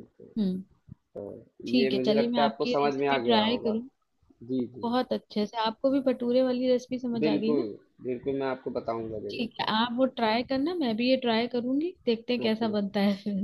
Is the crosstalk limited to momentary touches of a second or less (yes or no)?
no